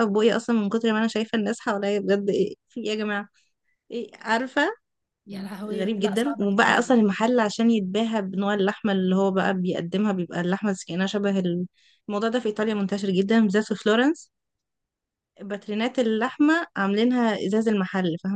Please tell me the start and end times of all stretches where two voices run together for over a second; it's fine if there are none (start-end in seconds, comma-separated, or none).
5.7-6.9